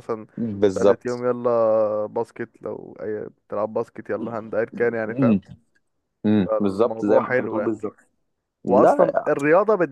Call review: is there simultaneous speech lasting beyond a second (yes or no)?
yes